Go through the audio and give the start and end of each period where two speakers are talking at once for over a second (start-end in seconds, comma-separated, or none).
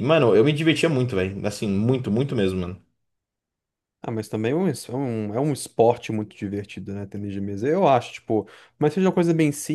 none